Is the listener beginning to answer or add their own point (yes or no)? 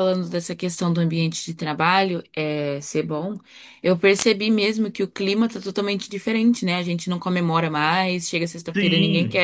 no